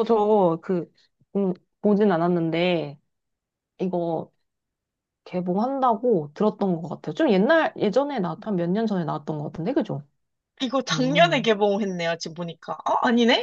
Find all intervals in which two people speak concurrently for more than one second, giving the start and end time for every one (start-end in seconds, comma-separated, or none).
none